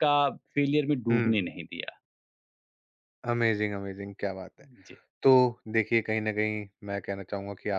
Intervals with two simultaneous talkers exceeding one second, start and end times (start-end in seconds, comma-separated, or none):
none